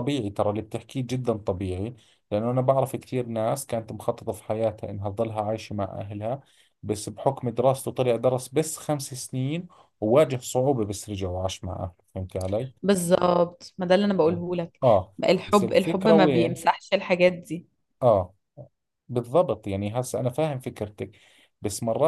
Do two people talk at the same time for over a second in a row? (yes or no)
yes